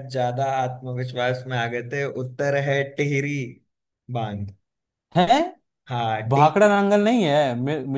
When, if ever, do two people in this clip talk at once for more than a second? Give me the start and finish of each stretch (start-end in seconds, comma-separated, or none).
none